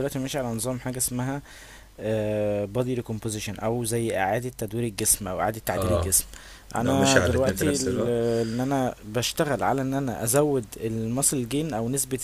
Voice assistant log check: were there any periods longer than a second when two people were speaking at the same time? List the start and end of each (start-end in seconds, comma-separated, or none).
6.8-8.1